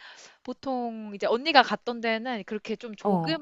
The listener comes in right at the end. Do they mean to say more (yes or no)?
no